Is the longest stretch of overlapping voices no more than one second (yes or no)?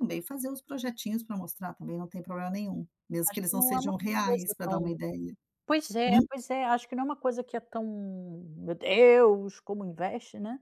no